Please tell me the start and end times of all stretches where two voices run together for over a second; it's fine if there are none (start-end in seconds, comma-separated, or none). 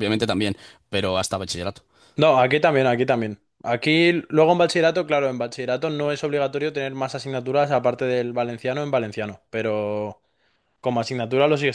none